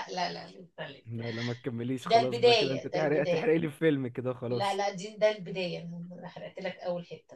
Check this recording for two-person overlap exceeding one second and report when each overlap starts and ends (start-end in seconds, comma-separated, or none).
2.0-3.5